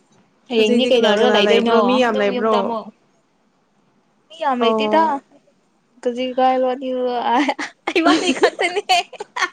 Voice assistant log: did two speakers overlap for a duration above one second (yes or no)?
yes